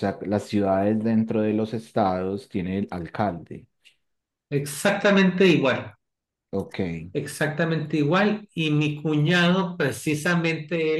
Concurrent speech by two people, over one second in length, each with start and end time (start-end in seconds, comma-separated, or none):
none